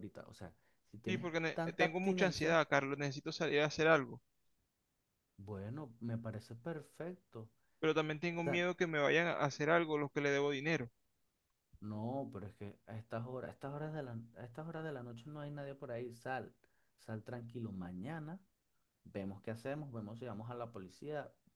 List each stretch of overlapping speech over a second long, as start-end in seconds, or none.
1.1-2.6